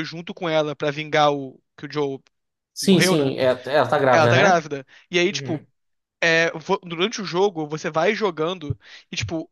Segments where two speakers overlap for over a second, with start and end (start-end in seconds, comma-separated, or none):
none